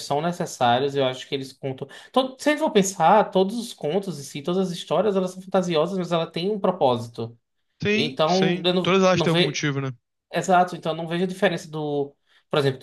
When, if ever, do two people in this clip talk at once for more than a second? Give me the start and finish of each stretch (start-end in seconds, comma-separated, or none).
7.9-9.6